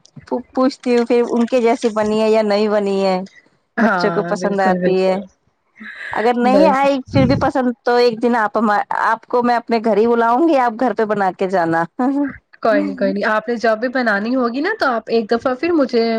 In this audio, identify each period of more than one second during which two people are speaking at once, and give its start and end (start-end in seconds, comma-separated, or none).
3.9-5.2